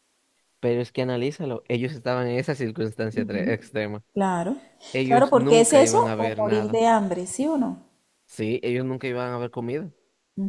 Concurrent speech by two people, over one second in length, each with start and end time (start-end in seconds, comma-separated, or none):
5.0-6.8